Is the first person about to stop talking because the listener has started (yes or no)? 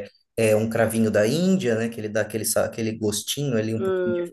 yes